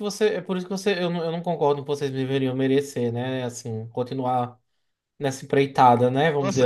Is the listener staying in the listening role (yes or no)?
no